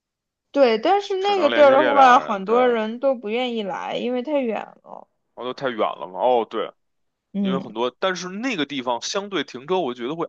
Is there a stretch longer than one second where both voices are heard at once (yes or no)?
yes